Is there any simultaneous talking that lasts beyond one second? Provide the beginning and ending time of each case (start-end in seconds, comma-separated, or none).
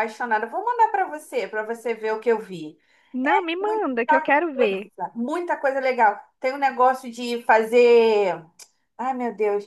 3.2-4.9